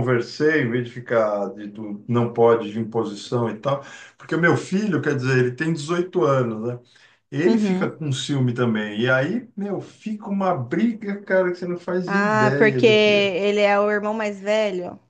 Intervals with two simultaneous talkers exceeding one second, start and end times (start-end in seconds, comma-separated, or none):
12.1-13.3